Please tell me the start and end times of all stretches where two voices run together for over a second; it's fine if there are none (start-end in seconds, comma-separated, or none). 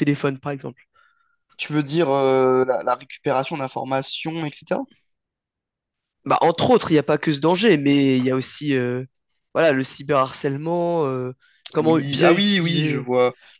11.8-13.1